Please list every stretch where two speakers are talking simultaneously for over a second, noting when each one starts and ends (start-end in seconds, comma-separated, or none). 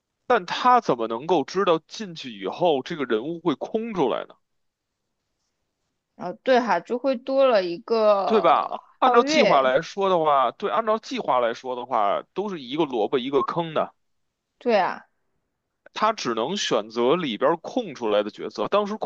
8.2-9.7